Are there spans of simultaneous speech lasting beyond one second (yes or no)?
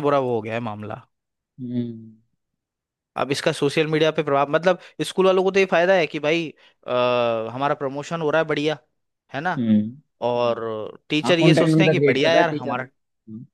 yes